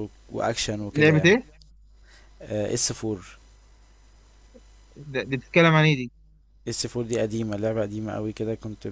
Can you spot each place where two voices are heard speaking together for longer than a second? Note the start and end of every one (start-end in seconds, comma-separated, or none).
none